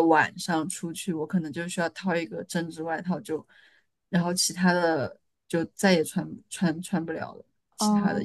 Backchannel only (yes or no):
no